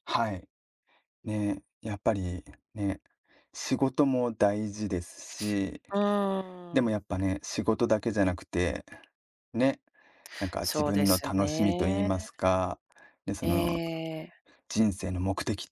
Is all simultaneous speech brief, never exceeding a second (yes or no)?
no